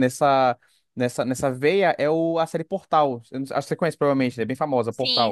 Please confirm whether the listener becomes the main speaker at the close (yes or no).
yes